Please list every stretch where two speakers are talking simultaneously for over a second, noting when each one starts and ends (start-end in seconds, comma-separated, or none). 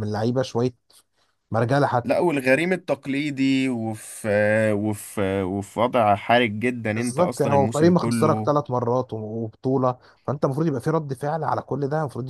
6.9-8.5